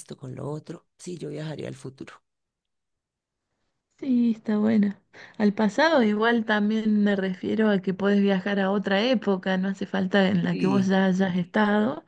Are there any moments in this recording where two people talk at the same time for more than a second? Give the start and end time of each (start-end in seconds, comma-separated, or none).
none